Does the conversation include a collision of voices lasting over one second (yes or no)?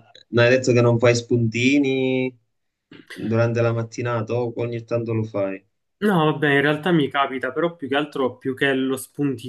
no